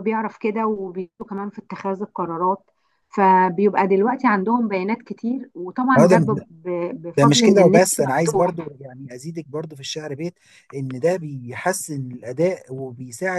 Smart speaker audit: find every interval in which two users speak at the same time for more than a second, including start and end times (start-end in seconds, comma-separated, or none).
7.2-8.7